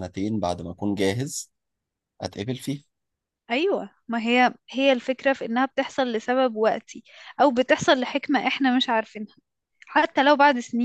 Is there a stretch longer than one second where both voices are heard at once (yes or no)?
no